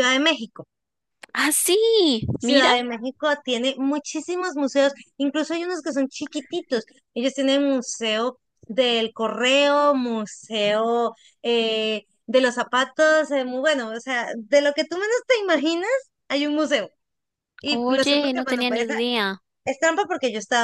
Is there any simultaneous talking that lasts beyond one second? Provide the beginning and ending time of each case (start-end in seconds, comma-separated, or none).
17.7-19.0